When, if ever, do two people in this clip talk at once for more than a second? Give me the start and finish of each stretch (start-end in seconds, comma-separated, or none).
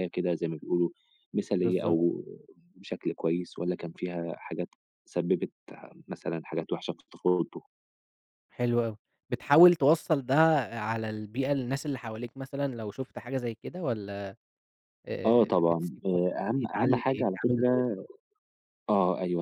15.3-18.0